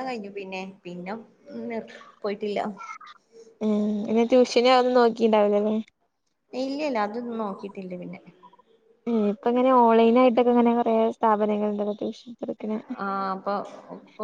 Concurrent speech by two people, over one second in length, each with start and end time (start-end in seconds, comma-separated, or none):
none